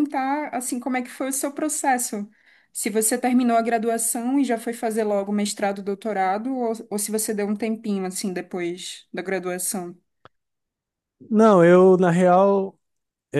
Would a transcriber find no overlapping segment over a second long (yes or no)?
yes